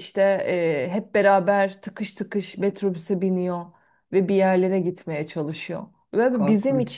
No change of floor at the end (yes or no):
yes